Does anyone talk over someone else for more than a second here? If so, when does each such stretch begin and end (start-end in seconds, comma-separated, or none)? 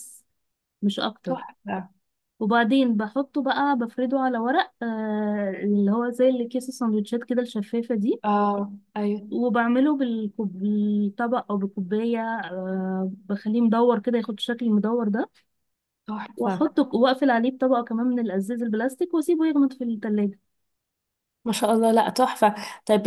none